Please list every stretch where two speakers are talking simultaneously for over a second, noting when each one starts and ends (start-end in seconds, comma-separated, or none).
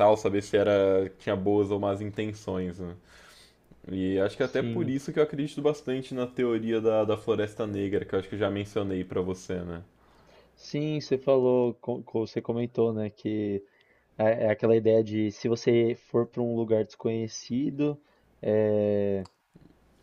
none